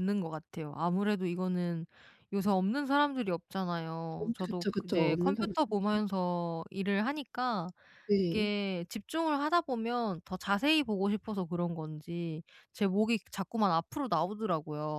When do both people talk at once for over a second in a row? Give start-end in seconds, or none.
4.2-6.0